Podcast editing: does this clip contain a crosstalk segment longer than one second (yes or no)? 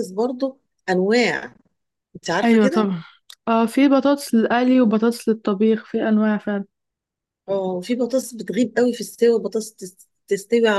no